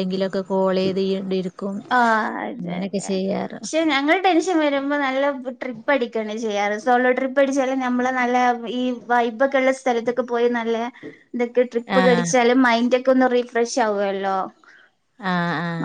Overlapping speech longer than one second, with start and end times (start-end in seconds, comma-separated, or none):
none